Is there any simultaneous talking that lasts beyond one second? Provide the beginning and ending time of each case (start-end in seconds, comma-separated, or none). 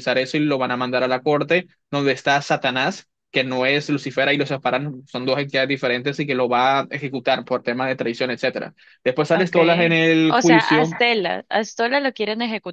9.3-11.0